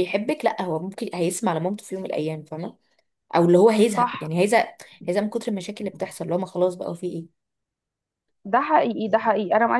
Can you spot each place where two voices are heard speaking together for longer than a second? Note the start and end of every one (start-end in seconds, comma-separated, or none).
none